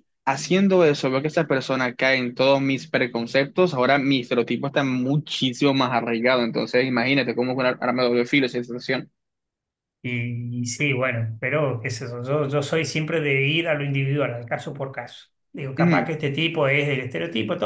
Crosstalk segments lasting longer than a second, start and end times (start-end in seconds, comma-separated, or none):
none